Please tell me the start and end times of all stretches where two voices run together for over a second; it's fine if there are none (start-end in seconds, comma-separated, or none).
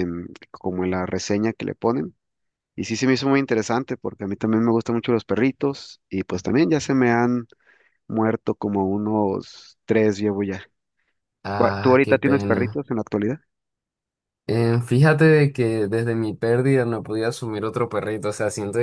11.5-12.8